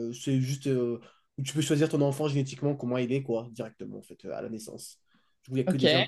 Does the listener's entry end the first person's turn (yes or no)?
no